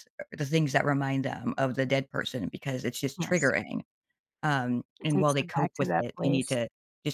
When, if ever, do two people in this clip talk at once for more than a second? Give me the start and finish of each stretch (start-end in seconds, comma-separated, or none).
5.0-6.6